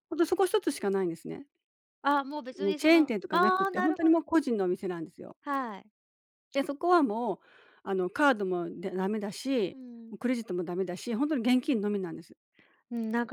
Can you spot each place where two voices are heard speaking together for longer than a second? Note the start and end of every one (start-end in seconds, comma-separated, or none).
2.6-4.2